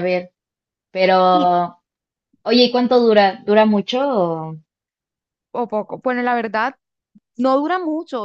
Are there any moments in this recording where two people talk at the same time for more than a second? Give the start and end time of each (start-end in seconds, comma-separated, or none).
none